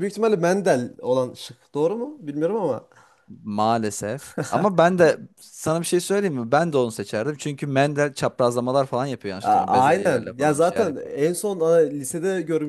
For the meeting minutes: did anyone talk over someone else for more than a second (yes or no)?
yes